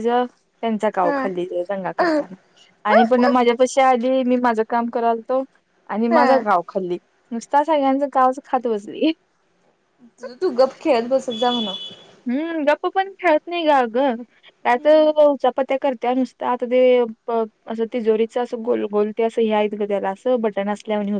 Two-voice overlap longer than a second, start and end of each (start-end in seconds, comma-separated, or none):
none